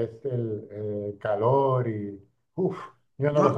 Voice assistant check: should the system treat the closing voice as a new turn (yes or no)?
yes